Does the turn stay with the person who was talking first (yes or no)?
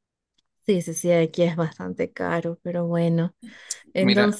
yes